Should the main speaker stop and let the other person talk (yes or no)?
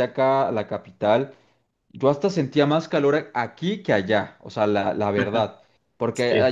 no